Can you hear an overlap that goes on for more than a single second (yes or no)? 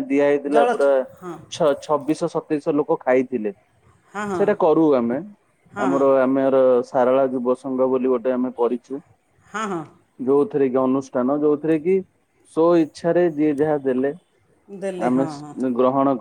no